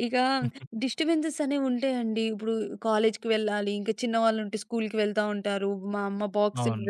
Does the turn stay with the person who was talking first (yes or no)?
yes